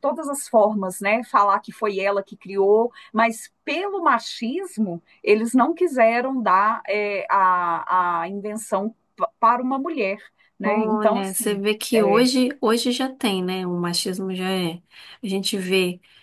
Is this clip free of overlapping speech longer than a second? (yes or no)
no